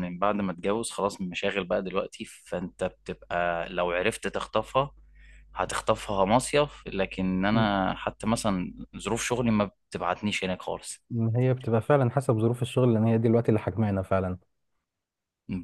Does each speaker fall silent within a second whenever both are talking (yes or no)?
yes